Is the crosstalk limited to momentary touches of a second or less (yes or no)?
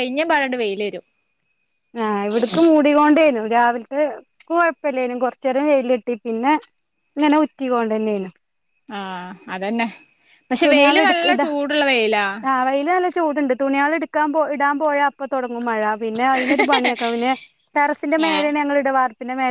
yes